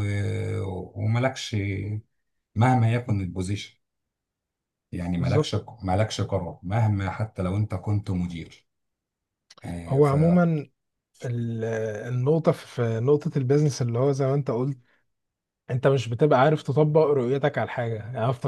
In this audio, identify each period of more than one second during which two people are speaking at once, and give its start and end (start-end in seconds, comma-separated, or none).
none